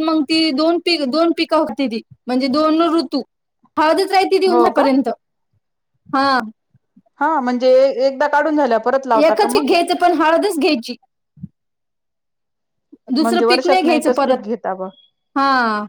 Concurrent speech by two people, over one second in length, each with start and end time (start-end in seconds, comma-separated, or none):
13.2-14.4